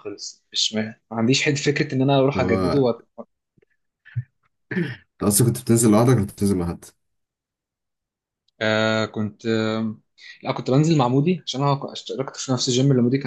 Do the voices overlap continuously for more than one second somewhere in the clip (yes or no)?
no